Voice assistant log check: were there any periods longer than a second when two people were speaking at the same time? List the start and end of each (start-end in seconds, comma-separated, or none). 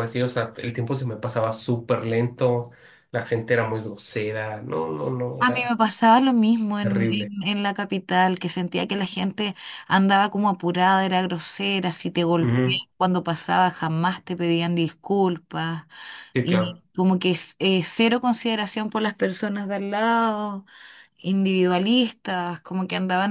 none